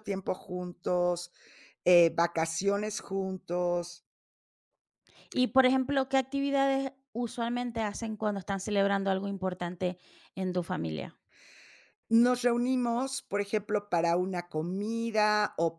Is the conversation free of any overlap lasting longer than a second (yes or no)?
yes